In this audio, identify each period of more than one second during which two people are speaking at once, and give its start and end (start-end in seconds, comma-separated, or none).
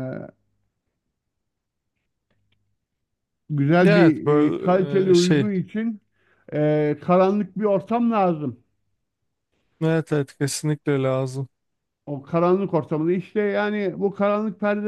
3.9-5.5